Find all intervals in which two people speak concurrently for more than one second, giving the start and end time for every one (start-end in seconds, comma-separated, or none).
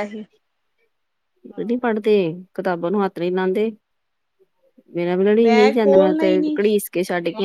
5.0-6.5